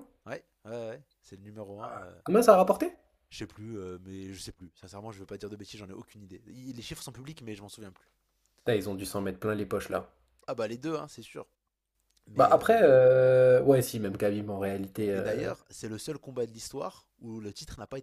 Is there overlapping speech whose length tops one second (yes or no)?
no